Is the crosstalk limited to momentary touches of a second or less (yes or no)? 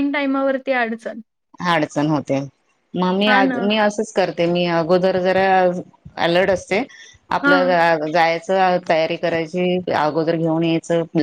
yes